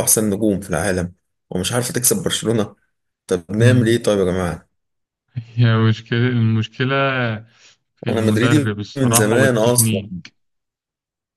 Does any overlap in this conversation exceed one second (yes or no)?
yes